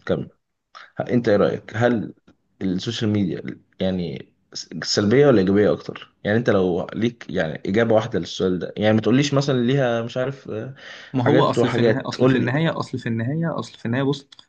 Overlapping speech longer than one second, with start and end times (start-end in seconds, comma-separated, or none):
11.2-12.5